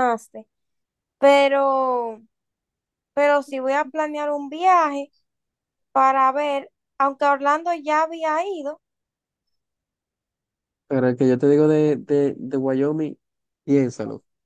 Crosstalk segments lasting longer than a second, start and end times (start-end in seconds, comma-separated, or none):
none